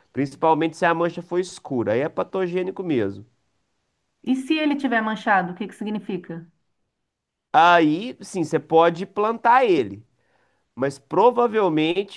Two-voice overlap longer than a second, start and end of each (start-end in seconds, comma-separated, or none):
none